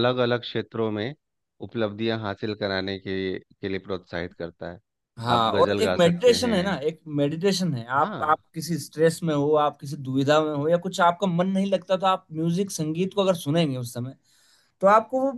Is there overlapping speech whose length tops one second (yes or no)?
yes